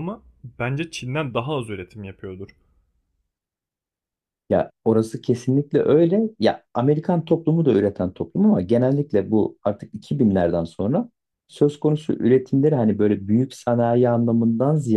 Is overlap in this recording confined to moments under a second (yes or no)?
yes